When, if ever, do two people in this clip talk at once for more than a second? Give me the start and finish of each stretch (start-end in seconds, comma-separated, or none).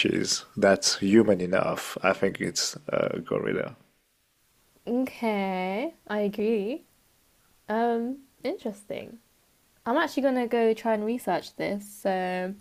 none